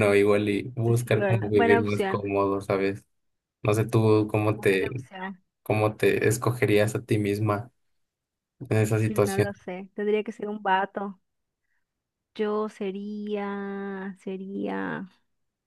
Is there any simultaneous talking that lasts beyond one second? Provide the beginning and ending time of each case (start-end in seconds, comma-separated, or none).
1.0-2.3